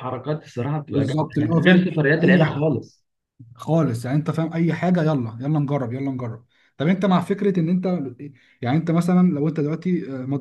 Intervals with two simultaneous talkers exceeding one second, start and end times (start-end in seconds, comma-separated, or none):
0.9-2.6